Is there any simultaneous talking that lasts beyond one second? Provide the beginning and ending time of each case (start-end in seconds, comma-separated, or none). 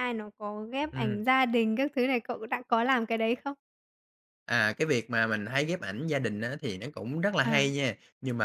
none